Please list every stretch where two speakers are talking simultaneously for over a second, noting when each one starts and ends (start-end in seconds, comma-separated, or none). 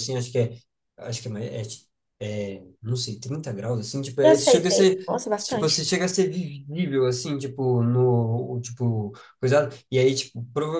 4.2-5.8